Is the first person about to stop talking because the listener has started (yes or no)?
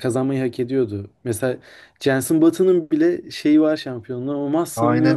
yes